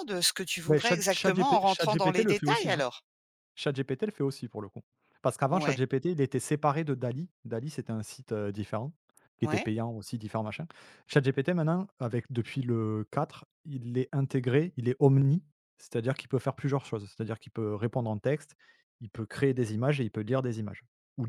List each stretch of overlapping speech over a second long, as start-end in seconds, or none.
0.7-2.8